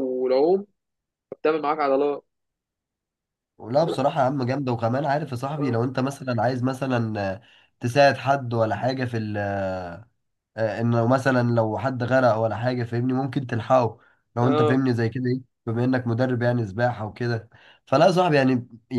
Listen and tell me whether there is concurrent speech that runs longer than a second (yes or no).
no